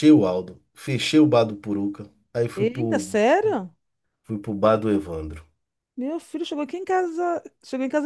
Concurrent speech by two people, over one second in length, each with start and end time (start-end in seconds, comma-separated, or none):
none